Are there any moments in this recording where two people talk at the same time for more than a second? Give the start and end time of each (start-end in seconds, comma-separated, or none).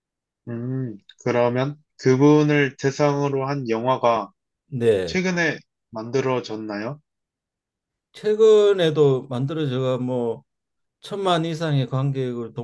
none